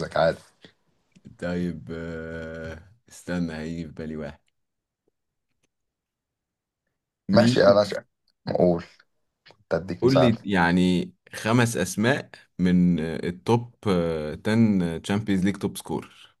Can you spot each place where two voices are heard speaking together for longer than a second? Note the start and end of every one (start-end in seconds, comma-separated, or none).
none